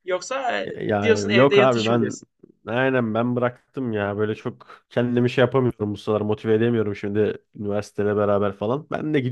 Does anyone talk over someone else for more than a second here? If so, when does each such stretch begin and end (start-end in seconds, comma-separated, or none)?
0.6-2.1